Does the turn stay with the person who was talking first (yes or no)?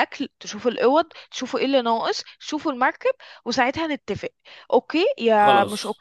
yes